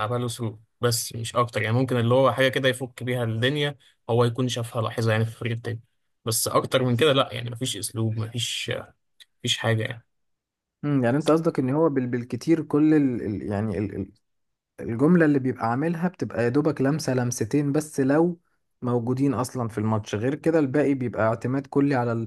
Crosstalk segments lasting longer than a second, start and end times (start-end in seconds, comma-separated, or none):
none